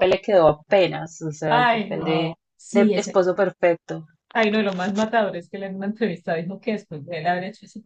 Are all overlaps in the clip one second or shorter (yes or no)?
no